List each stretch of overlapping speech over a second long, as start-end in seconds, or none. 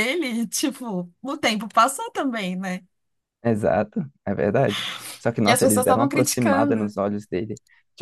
5.4-6.9